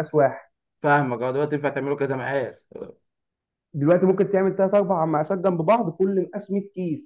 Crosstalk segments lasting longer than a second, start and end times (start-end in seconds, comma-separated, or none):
none